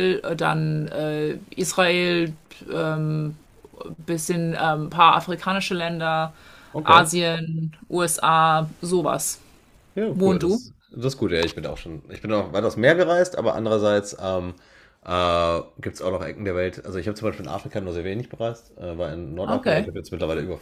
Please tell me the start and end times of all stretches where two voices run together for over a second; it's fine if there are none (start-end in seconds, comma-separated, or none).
none